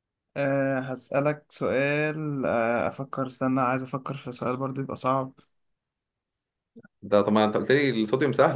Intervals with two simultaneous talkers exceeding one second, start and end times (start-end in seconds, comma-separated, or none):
none